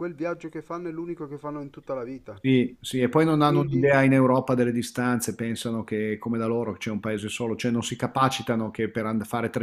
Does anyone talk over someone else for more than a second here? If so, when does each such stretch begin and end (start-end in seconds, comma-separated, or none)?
none